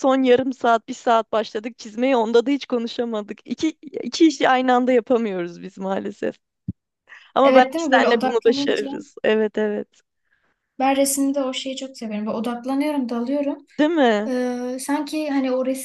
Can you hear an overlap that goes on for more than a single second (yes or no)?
yes